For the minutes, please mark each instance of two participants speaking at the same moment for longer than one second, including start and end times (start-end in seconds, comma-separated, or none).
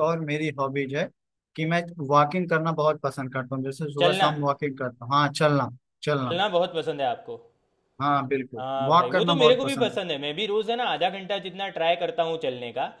8.6-10.0